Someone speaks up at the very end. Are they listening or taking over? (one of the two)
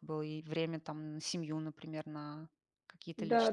taking over